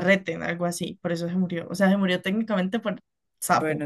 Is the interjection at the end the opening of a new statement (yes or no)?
yes